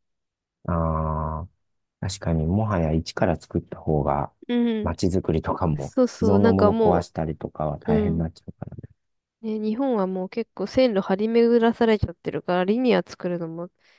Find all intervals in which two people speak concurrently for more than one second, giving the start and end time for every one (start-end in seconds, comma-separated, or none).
5.8-7.1